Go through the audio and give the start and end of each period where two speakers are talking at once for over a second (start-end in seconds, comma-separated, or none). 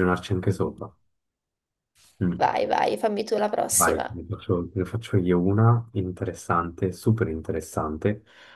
none